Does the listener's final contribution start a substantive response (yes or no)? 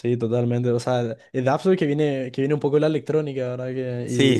yes